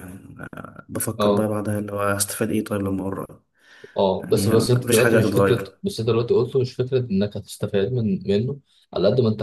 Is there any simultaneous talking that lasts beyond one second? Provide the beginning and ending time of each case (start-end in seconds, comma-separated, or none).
4.2-5.8